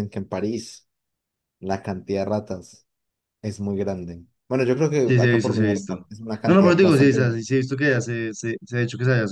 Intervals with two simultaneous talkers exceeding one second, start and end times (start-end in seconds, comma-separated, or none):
5.0-7.4